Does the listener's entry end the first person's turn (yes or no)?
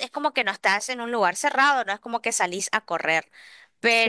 no